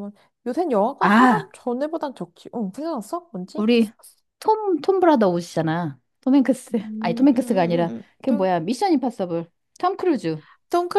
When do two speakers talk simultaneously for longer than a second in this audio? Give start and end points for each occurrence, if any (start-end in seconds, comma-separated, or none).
6.8-8.5